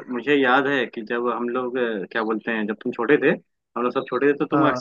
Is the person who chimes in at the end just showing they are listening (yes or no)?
yes